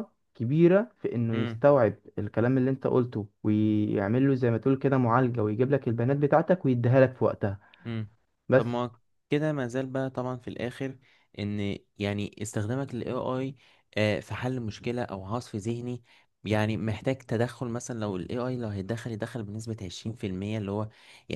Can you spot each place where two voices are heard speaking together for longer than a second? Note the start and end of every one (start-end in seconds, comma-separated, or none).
none